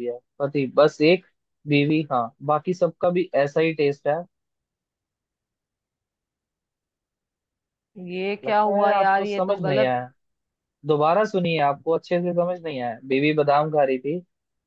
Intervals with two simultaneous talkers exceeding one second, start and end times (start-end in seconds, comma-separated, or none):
8.4-9.9